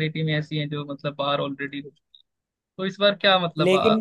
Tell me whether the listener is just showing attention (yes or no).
yes